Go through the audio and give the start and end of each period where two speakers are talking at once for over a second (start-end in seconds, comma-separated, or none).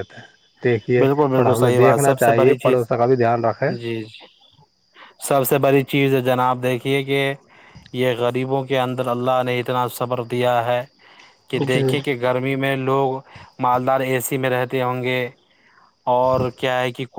1.0-2.9